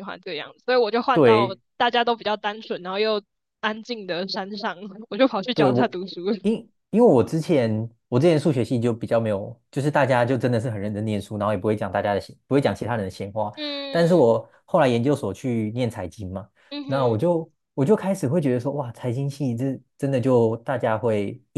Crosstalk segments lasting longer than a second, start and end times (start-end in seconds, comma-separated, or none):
none